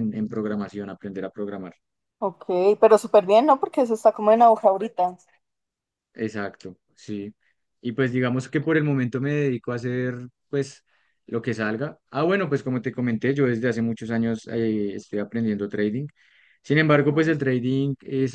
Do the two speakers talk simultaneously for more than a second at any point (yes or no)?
no